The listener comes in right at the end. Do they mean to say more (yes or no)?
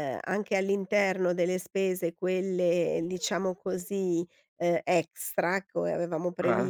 no